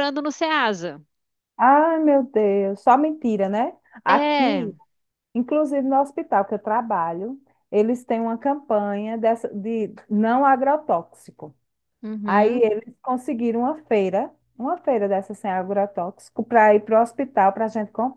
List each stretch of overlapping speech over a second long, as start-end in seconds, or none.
none